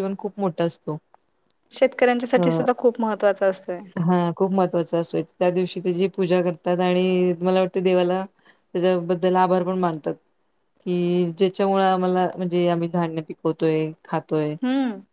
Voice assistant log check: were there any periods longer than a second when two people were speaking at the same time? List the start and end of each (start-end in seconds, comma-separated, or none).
none